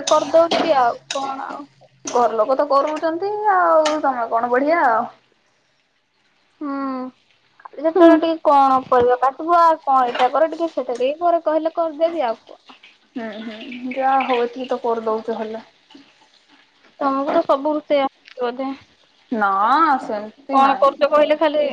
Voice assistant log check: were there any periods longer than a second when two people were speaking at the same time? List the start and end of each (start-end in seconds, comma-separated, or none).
none